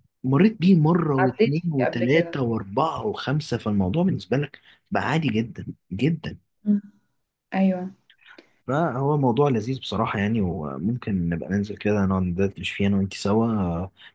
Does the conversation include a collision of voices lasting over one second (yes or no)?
yes